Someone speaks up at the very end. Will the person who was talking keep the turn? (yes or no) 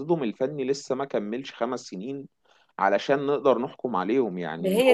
no